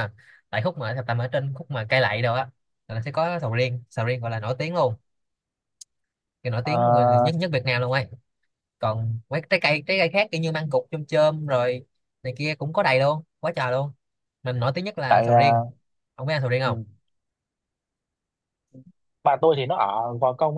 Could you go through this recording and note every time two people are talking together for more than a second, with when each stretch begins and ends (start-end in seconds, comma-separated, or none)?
none